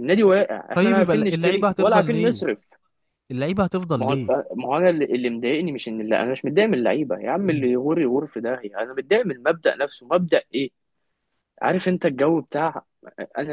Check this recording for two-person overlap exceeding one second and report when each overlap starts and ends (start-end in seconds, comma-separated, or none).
0.8-2.4